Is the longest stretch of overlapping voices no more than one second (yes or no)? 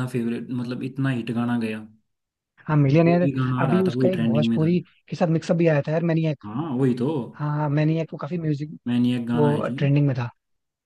no